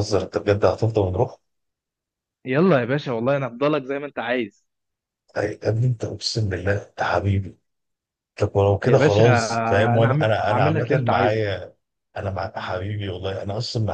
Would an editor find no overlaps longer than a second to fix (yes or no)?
no